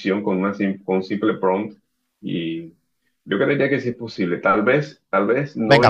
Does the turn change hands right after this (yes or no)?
yes